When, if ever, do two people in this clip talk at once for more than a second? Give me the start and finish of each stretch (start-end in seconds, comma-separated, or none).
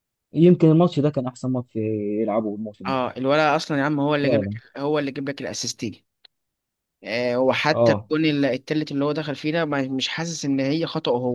none